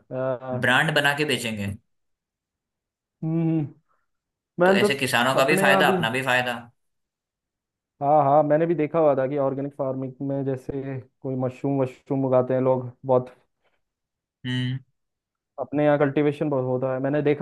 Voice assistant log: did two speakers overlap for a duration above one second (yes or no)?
yes